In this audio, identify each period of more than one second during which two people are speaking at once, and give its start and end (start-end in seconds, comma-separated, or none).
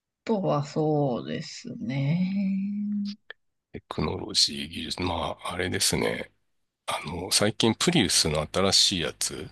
none